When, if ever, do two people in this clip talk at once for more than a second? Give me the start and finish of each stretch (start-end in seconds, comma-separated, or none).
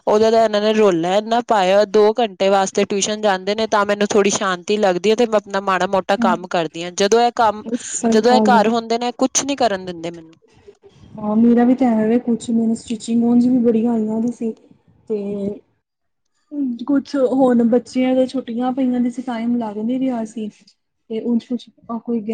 none